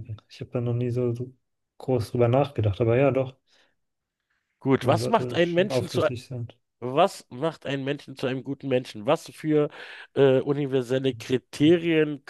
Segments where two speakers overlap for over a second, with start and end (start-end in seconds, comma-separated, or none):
4.8-6.1